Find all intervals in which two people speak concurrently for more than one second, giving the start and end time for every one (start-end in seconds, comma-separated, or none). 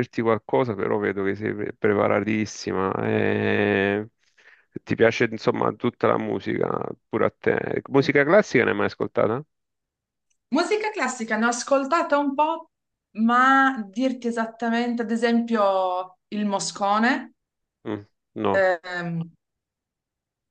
none